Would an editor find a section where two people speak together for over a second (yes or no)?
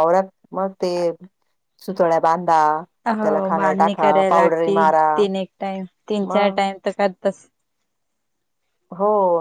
yes